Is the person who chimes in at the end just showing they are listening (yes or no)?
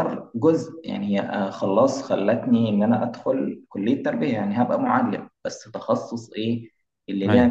yes